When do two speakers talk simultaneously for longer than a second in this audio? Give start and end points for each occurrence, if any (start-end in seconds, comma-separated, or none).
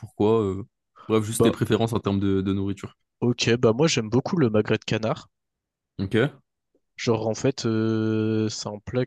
none